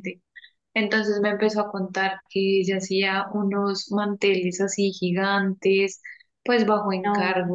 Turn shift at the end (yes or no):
no